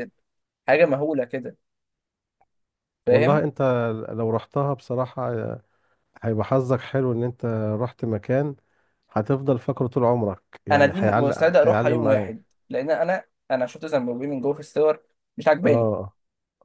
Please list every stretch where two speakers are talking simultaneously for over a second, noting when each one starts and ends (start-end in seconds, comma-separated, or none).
10.7-12.3